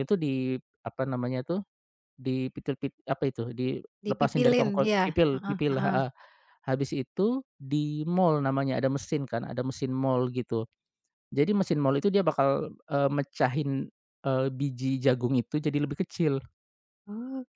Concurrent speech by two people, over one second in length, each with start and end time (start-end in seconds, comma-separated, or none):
4.0-6.0